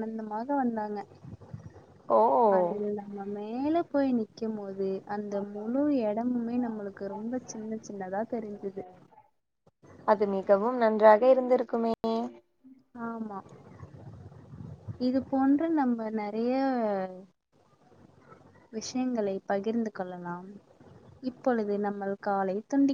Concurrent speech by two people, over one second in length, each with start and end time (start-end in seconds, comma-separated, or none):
none